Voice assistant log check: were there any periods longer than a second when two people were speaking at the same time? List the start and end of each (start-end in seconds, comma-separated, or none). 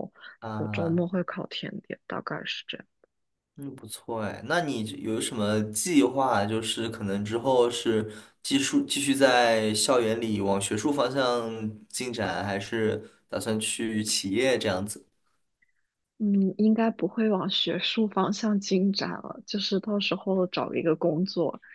none